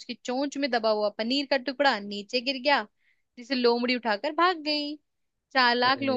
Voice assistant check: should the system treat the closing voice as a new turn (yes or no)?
no